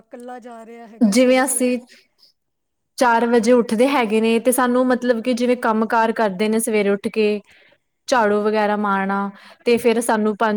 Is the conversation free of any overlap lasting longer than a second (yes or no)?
yes